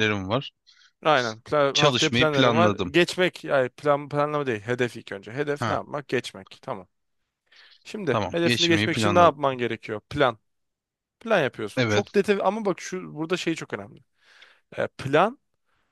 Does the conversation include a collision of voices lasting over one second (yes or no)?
yes